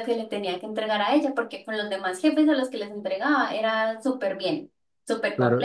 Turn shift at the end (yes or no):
yes